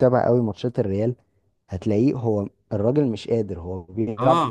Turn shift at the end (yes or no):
yes